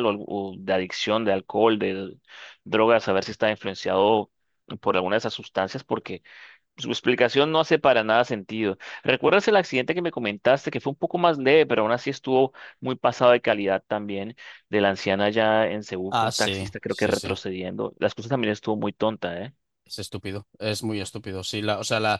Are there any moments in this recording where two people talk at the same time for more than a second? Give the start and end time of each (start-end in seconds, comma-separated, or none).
16.1-17.4